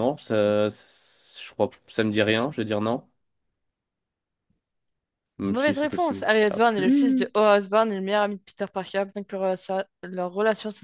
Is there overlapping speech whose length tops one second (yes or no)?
yes